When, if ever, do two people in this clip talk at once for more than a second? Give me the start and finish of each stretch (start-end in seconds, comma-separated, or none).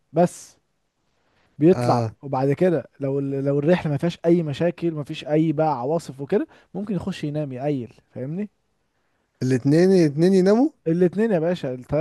none